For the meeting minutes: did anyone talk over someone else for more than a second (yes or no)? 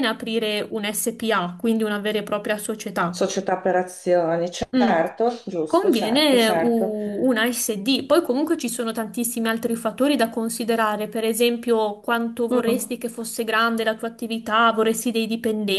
yes